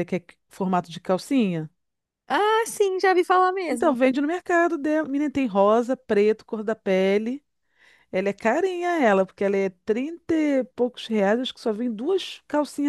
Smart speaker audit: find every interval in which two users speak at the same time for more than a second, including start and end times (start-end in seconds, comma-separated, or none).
none